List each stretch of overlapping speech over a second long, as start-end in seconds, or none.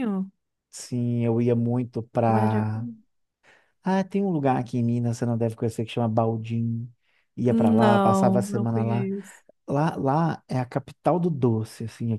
7.5-9.1